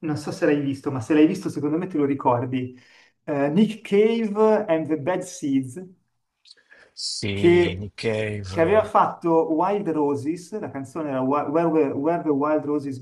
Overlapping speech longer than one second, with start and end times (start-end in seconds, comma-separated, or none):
none